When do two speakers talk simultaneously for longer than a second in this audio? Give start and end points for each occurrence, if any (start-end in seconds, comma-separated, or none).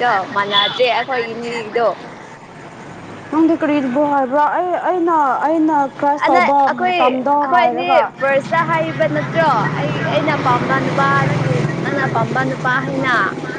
6.3-8.1